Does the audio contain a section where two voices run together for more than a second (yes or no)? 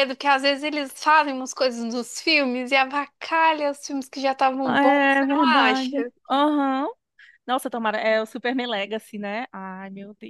yes